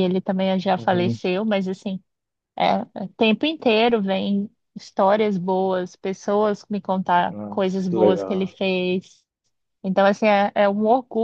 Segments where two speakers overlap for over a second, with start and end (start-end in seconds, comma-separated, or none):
7.3-8.6